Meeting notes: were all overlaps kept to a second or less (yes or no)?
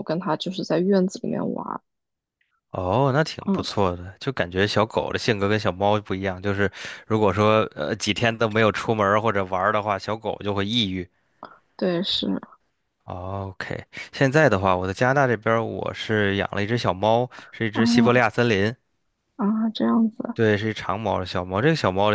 yes